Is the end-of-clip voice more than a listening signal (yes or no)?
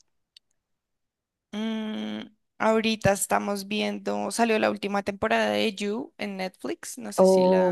yes